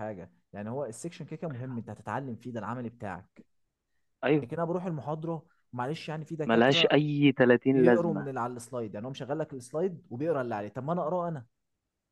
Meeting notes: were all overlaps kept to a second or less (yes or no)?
yes